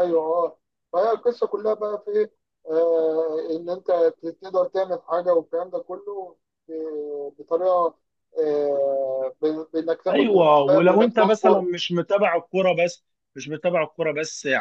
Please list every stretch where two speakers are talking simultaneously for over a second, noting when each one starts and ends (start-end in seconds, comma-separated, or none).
10.1-11.6